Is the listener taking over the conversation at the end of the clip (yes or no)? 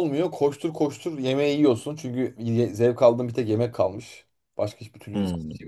no